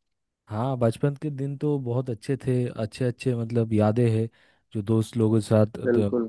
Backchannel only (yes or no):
yes